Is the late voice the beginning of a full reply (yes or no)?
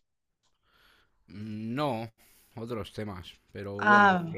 no